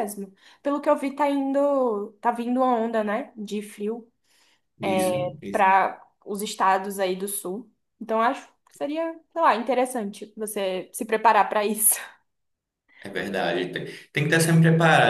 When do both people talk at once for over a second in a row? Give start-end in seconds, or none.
none